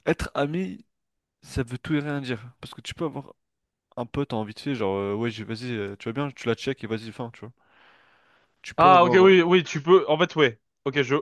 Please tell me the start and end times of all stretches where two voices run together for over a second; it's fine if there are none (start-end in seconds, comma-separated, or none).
none